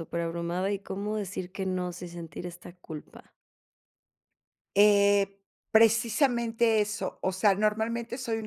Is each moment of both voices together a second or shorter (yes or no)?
yes